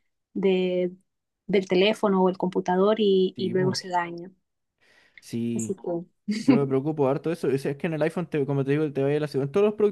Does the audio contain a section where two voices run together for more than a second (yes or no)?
no